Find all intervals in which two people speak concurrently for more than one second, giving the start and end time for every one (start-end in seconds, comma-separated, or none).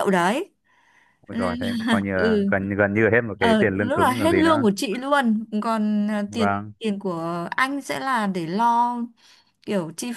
3.4-4.7